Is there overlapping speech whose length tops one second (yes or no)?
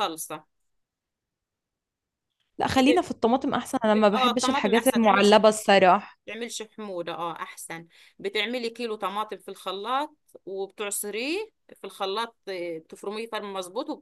yes